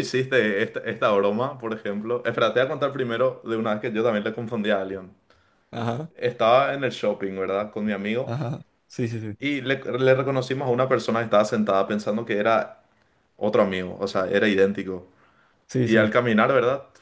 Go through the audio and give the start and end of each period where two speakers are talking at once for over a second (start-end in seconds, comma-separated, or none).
none